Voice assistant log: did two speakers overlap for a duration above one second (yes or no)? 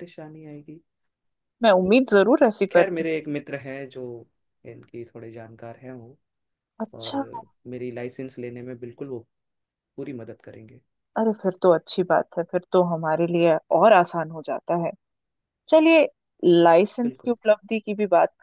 no